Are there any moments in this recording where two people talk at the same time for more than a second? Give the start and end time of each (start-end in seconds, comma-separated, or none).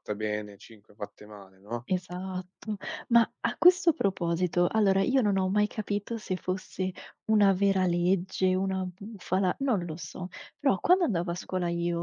none